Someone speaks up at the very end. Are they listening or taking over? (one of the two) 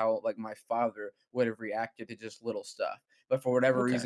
listening